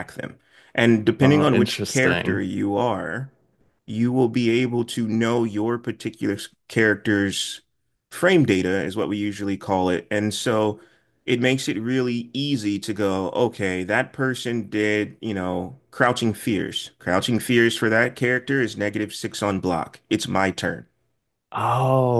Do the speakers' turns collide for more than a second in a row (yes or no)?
yes